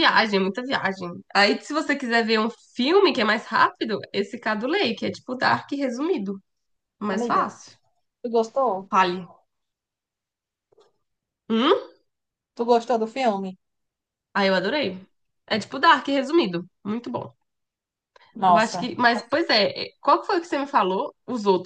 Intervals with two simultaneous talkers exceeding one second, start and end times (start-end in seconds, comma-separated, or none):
none